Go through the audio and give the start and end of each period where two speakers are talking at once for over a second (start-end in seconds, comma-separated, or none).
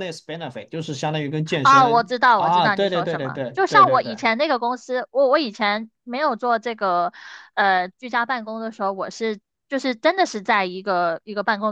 1.6-4.1